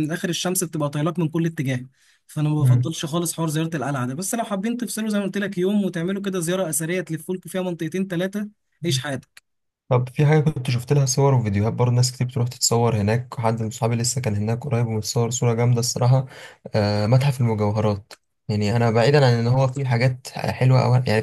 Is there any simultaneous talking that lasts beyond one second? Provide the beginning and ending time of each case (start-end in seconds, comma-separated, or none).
none